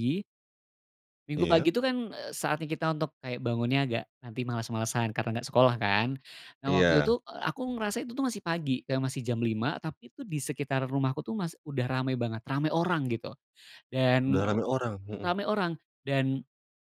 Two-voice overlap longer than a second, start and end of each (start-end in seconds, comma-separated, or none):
none